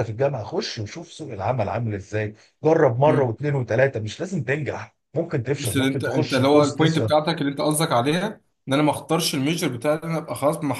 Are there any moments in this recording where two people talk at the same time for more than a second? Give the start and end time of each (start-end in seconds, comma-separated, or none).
5.6-7.1